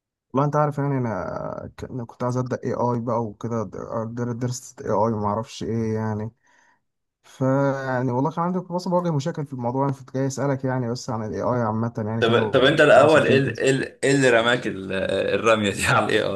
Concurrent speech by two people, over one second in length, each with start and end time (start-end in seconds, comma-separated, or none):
12.2-13.7